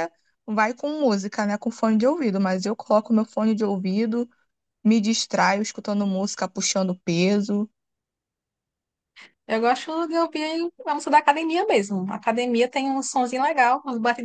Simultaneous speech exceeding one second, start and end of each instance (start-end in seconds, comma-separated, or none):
none